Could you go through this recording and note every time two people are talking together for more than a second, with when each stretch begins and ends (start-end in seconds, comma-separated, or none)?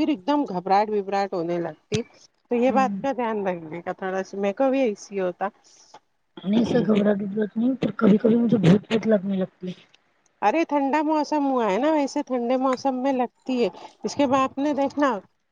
none